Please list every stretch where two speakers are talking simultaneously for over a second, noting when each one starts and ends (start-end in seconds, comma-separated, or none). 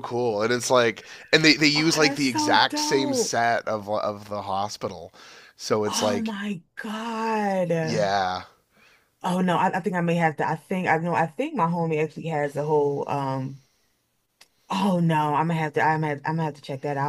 1.7-3.4